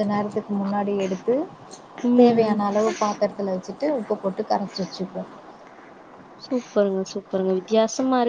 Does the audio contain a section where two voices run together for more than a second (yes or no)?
no